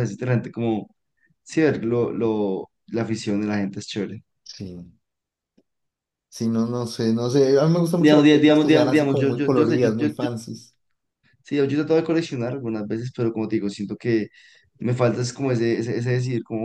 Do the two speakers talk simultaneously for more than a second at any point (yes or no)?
yes